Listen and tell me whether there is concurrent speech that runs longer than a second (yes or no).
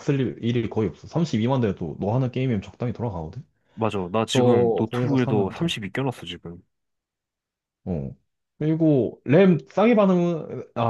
yes